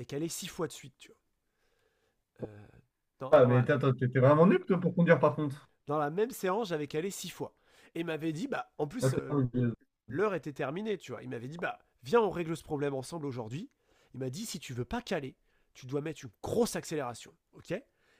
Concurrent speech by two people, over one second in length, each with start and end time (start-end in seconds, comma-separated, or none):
none